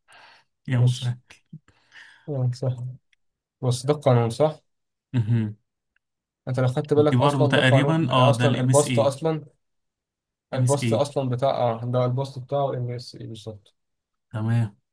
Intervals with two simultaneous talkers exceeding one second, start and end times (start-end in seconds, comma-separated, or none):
7.0-9.2